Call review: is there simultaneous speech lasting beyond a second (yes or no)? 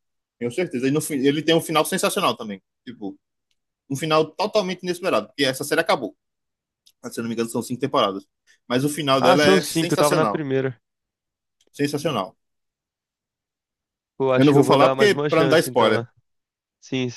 yes